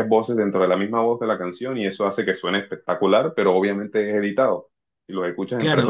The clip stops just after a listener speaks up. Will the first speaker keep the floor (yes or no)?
no